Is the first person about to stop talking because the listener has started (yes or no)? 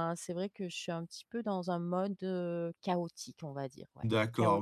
yes